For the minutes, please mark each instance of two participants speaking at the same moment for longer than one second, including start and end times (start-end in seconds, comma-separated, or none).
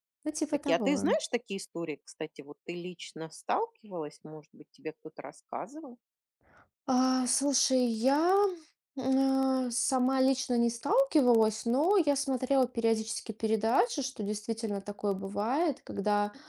none